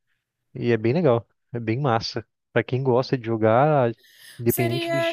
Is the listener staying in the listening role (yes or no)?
no